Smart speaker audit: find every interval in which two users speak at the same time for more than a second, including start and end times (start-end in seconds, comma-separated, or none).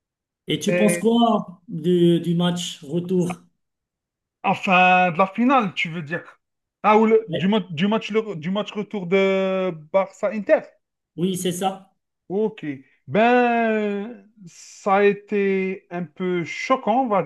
none